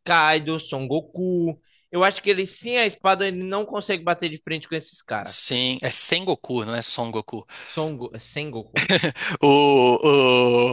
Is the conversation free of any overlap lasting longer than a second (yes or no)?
yes